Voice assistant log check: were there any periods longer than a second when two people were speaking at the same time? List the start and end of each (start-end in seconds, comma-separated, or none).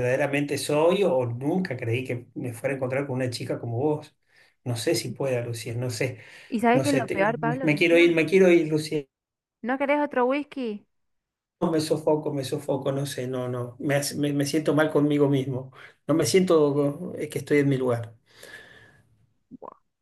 6.7-8.2